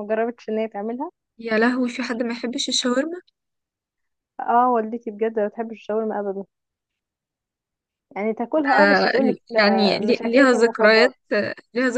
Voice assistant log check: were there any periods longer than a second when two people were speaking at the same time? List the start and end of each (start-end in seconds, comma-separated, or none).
8.8-11.1